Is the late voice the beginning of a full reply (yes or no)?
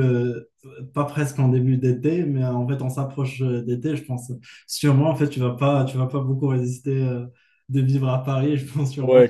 yes